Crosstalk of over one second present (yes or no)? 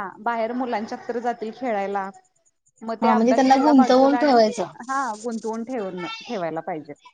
yes